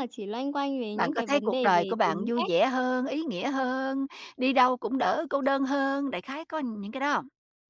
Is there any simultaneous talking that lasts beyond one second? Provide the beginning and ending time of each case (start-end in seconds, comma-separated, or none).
0.9-2.5